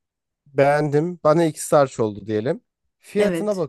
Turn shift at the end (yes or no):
no